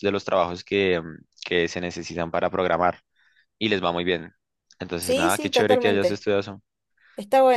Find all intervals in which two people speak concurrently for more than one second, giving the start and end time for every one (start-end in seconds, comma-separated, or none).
5.0-6.2